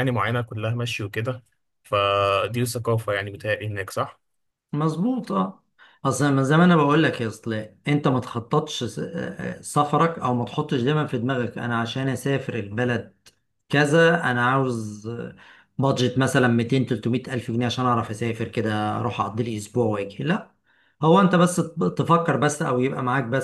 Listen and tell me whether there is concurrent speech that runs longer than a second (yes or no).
no